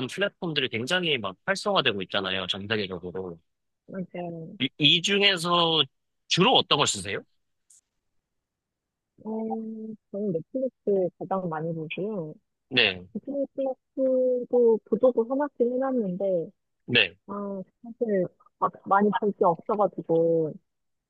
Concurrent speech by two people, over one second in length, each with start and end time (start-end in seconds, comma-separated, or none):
none